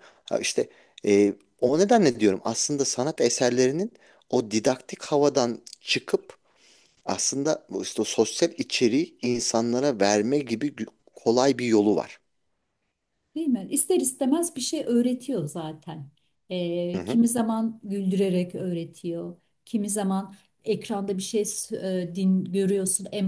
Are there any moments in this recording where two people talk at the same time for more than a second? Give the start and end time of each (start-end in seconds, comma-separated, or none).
none